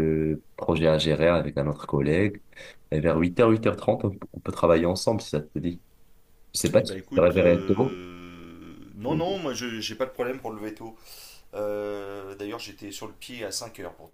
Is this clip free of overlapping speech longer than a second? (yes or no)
no